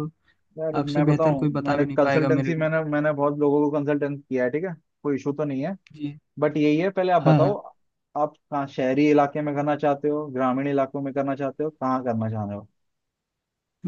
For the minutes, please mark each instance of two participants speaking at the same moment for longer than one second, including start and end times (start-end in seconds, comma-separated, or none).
0.8-2.7